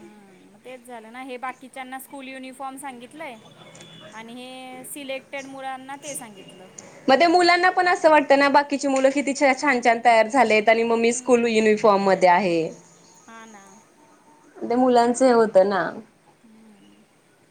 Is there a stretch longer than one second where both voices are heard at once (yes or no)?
no